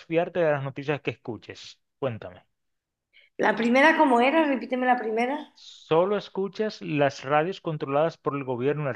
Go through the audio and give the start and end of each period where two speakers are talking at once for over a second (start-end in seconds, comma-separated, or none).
none